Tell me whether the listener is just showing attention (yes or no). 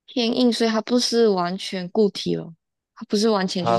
no